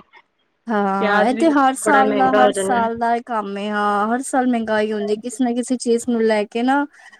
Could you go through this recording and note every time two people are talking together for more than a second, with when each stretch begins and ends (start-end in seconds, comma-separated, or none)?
1.0-2.8